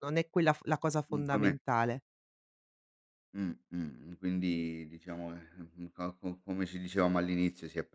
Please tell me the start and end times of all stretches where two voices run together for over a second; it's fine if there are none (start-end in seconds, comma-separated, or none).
none